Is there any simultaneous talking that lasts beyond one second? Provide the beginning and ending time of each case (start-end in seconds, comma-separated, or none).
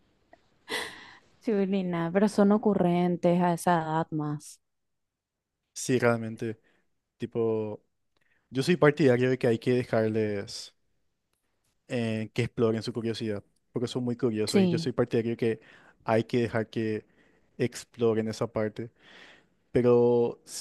none